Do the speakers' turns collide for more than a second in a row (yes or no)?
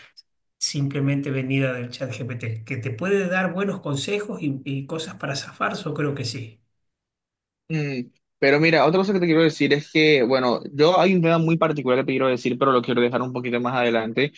no